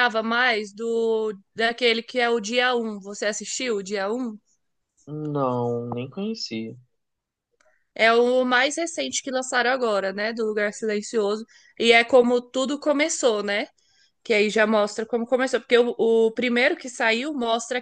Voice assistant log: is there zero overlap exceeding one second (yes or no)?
yes